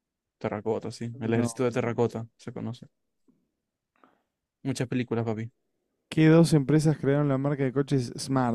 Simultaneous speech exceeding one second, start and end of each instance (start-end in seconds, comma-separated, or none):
none